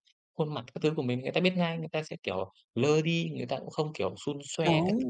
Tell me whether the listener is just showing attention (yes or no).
no